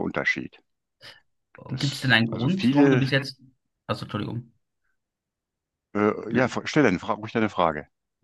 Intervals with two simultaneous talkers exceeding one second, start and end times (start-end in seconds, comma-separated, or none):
1.7-3.0